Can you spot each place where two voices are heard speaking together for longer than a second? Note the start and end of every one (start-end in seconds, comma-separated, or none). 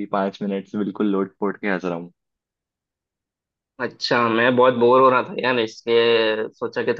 none